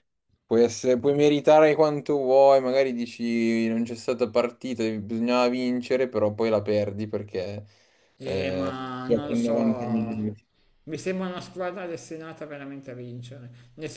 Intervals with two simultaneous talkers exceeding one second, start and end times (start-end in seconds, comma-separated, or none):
8.2-10.3